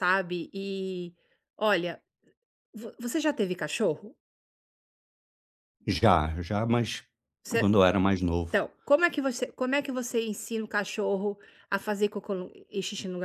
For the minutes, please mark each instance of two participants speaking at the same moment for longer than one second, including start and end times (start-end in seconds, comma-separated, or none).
none